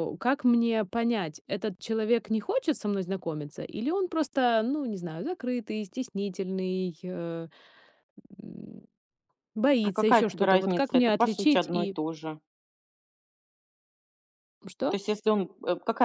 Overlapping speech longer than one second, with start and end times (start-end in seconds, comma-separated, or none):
9.8-12.0